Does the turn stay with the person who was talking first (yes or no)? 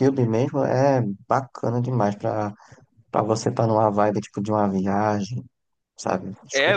no